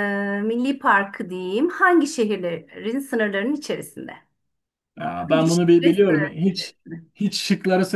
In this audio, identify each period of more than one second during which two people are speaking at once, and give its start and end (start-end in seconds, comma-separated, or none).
5.2-6.7